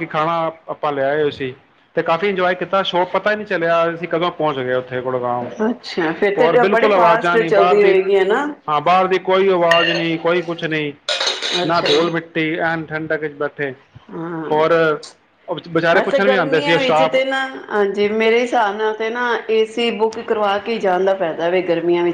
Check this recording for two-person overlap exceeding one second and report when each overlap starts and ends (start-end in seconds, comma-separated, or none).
6.4-8.0, 15.9-17.2